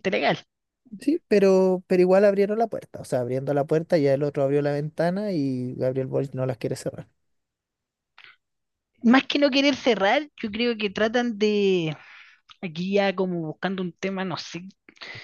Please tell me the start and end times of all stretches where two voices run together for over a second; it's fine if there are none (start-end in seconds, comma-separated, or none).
none